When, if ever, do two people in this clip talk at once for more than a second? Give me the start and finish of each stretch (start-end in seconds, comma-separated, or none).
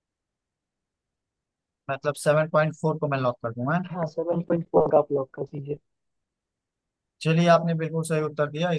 none